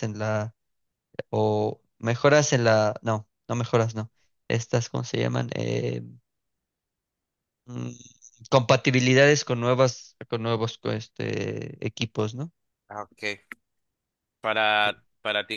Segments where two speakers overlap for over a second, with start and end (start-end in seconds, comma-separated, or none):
none